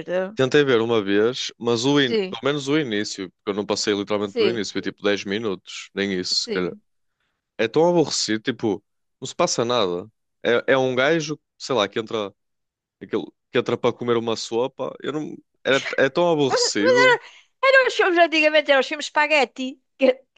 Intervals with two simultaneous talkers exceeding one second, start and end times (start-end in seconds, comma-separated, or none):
none